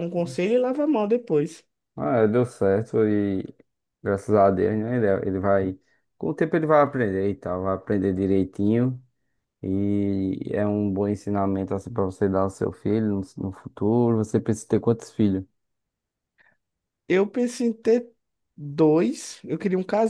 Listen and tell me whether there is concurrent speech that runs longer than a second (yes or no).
no